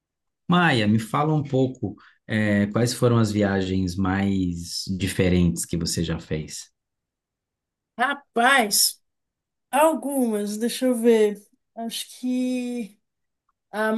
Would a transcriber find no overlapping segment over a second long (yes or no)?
yes